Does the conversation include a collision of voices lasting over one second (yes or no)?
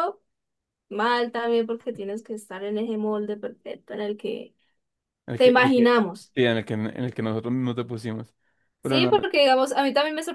no